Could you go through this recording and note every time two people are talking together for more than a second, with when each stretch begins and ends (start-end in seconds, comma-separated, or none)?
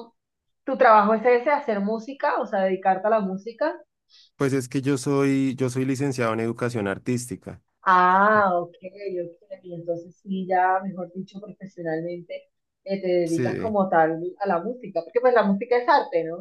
none